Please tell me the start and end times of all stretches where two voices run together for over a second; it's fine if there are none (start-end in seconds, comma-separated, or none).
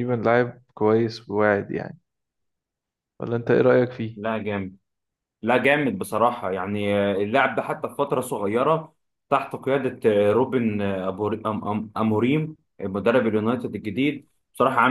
none